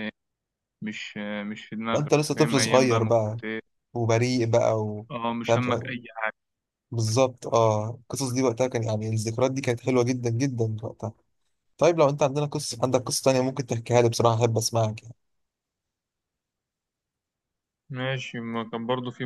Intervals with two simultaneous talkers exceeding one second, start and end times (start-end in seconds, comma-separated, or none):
1.9-3.4